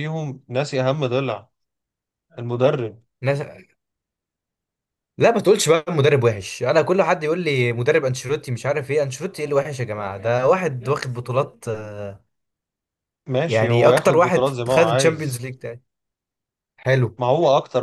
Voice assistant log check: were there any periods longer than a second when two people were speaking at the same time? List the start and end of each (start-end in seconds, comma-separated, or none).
13.5-15.5